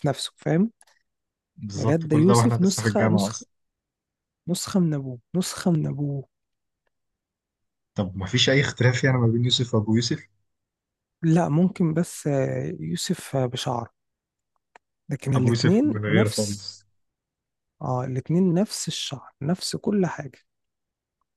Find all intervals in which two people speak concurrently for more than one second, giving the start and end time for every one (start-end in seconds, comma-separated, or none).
1.8-3.5, 15.3-16.8